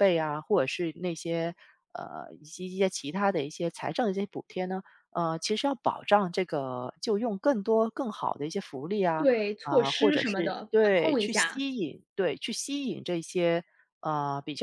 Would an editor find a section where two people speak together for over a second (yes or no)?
yes